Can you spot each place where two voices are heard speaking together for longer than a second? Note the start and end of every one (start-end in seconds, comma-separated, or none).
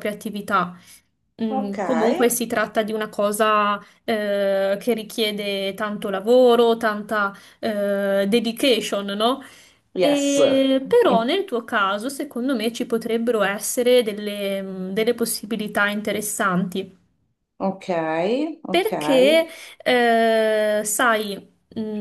10.0-11.3